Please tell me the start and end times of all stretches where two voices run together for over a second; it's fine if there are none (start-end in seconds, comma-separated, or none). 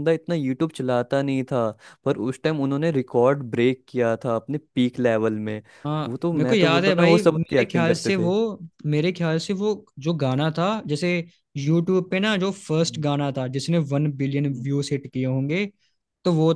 6.1-8.3